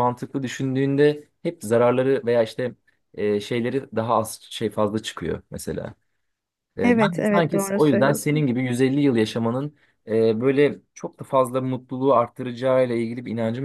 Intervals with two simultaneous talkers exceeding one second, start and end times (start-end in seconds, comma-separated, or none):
6.8-8.5